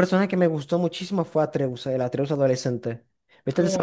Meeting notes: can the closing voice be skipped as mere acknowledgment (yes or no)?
no